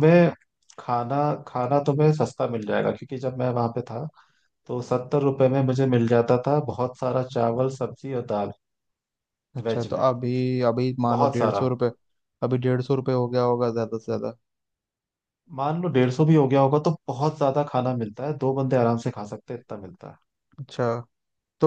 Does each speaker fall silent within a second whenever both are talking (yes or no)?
yes